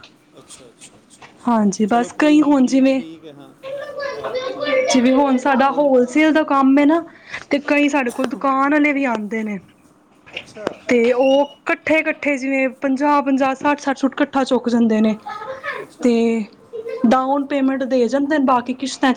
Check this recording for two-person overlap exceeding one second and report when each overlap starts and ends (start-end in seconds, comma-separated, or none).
1.5-3.0